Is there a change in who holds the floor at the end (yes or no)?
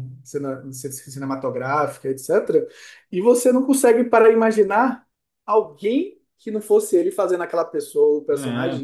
yes